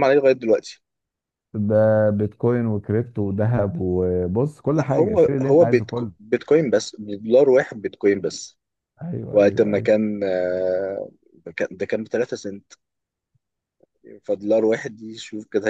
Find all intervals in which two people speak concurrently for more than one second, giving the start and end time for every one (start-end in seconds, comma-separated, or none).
4.7-6.1